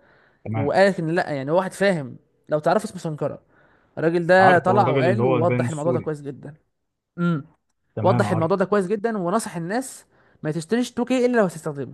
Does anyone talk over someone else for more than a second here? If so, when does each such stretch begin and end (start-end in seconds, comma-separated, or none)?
4.4-6.1